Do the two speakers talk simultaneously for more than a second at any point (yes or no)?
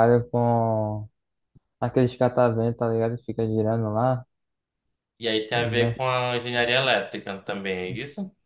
no